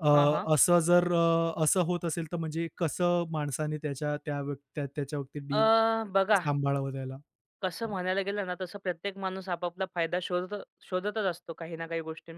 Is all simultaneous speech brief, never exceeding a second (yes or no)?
yes